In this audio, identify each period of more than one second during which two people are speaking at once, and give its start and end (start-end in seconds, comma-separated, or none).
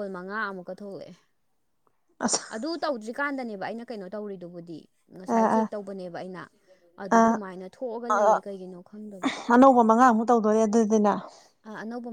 none